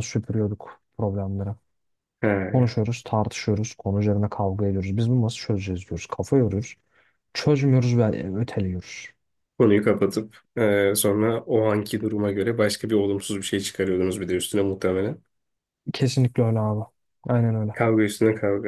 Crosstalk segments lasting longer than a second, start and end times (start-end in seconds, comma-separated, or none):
none